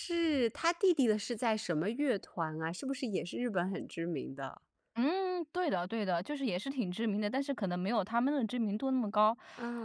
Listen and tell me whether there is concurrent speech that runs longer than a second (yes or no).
no